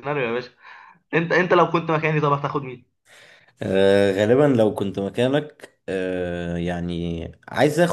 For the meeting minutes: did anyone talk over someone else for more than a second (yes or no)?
no